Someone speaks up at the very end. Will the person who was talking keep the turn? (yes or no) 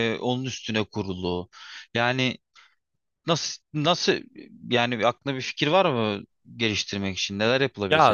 no